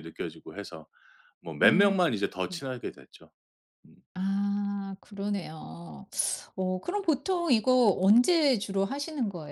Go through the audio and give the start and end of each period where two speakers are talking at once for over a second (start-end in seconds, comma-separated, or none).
none